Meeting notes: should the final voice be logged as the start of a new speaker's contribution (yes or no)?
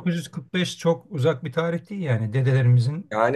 yes